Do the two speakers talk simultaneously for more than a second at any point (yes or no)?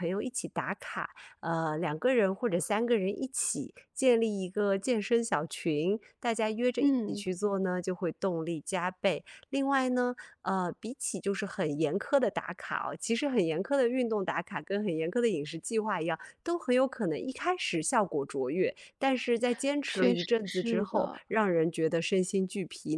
yes